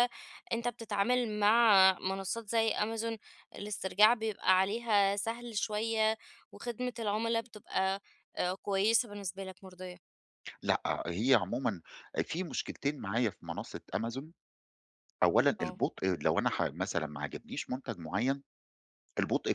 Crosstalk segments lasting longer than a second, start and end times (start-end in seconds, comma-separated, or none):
none